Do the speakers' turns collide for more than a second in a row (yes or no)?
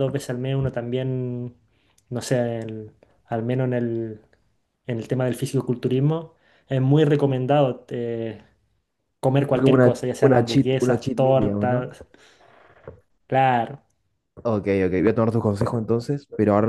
yes